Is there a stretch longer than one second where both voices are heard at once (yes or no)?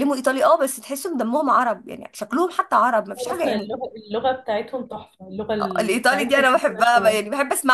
yes